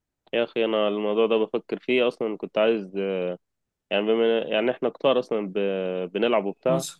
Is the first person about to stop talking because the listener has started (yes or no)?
no